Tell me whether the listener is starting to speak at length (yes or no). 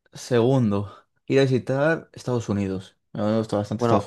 yes